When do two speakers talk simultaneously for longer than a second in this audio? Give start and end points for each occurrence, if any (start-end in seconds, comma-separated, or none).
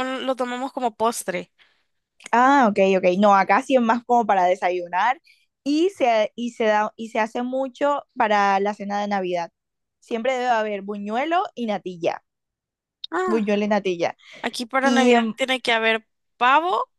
none